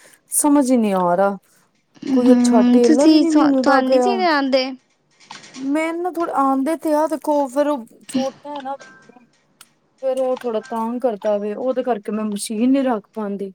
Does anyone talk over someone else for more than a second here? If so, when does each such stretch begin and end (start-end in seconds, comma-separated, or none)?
2.1-4.1